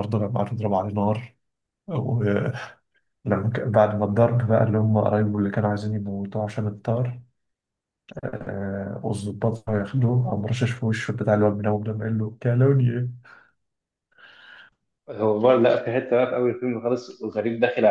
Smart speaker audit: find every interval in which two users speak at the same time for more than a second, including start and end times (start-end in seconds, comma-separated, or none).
none